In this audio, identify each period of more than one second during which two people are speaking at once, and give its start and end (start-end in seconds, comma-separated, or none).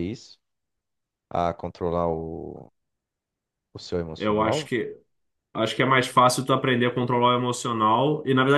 none